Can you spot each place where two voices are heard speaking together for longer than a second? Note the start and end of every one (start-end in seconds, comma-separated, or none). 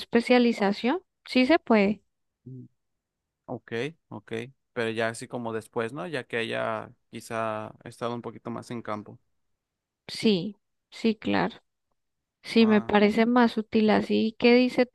none